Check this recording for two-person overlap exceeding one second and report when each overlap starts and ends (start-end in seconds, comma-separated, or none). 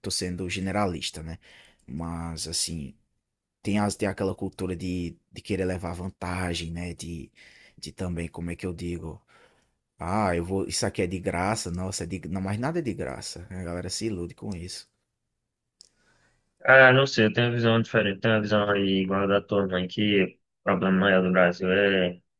none